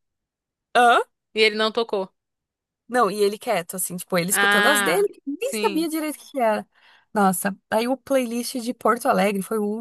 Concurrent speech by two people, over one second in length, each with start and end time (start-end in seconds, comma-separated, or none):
4.3-5.9